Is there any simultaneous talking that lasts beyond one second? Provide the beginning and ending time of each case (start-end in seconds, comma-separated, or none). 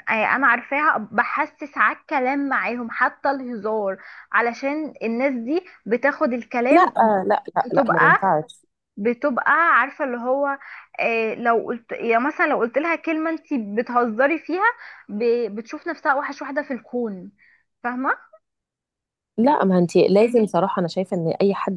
none